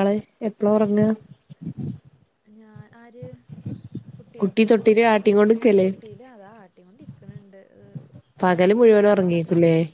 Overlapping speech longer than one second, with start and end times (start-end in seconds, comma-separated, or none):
none